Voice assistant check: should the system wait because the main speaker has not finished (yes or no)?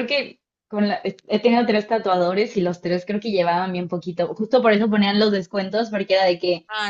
yes